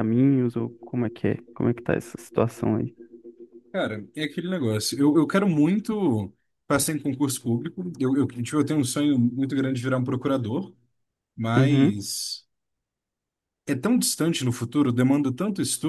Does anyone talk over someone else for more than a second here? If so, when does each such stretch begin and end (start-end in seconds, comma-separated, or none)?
none